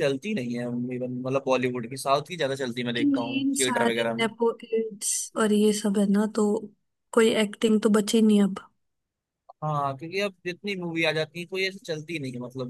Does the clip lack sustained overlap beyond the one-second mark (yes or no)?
no